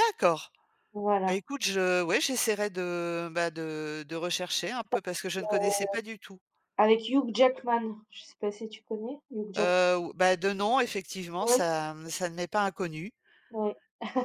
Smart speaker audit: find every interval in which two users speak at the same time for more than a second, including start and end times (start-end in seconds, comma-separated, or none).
none